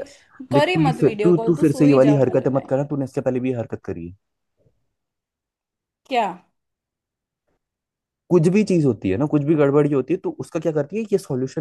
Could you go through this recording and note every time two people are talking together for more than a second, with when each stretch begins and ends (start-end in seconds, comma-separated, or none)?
0.5-2.7